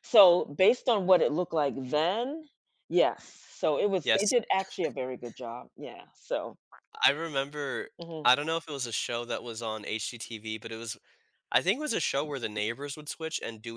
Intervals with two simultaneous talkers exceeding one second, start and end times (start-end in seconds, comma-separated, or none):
none